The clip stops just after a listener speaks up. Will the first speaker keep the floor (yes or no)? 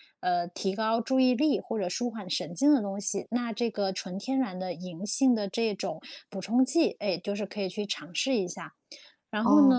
no